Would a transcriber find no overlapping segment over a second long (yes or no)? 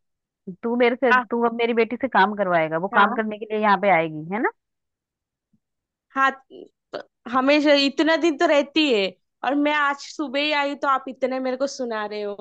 yes